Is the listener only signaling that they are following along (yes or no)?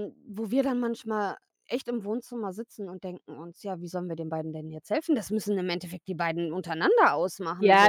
no